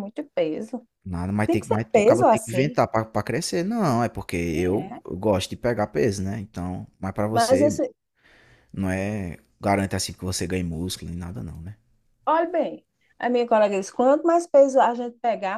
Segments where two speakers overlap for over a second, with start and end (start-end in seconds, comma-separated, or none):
1.4-2.8